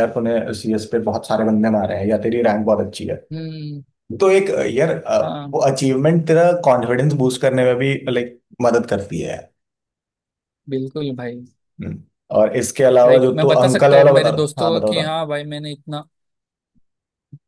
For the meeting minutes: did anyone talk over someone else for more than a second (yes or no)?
yes